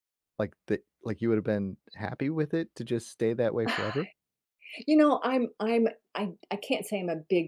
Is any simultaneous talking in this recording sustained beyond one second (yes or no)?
no